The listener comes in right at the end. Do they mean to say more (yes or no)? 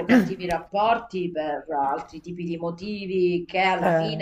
no